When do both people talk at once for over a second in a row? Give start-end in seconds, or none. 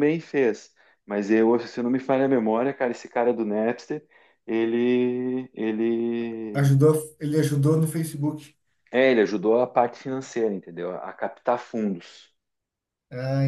none